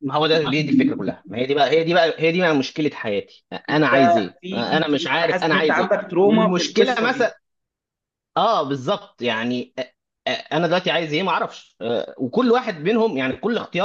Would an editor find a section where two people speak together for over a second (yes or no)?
yes